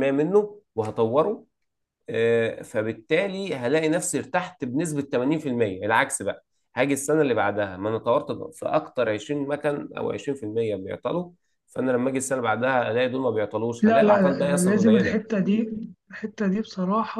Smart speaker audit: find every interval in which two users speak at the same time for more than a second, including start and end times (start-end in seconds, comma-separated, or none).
13.8-15.2